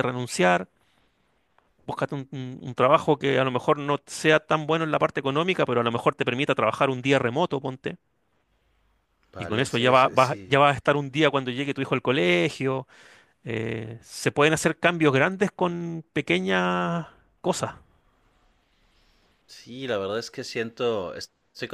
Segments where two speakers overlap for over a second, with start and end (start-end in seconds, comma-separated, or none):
9.4-10.6